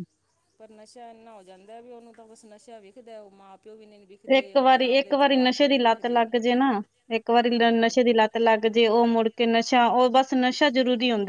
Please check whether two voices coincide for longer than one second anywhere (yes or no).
yes